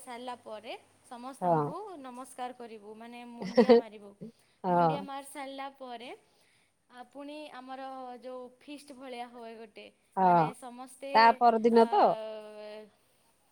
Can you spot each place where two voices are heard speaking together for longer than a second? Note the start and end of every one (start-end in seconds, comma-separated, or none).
none